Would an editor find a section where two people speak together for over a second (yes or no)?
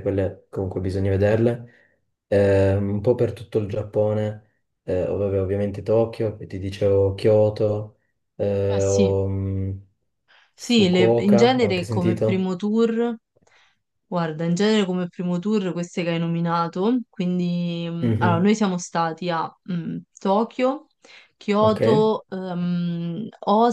yes